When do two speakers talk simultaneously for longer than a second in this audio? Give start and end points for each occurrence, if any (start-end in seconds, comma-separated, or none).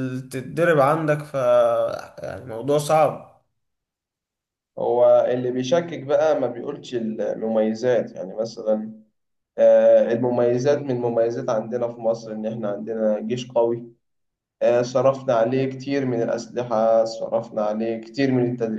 none